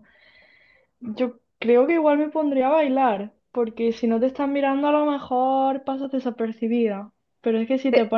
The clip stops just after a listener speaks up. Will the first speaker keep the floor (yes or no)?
yes